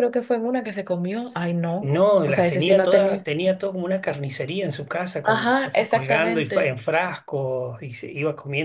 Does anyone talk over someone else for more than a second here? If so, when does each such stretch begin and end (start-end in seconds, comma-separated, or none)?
1.8-3.3, 5.2-6.8